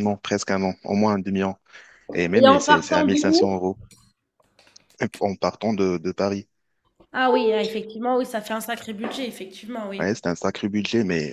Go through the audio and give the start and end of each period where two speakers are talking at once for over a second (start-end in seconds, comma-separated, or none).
2.3-3.7